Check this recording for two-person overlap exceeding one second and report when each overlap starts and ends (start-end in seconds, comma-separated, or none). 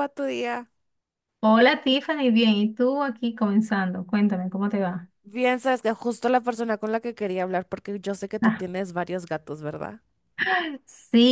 none